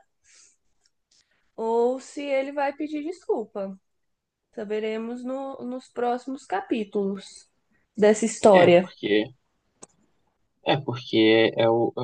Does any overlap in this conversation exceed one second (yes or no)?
no